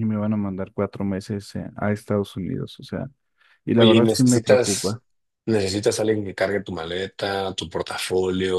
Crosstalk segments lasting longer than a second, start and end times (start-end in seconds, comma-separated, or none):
3.7-5.0